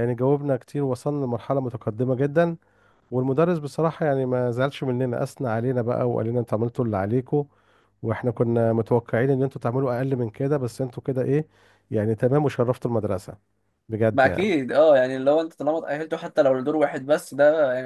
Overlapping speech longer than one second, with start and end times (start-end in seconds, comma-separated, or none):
none